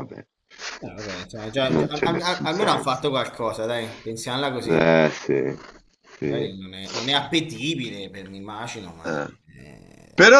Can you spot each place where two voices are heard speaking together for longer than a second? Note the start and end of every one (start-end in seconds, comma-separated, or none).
1.7-3.0